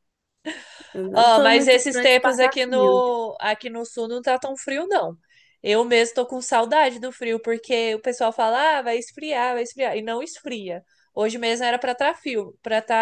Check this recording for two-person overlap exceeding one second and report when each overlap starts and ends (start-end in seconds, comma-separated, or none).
1.1-3.0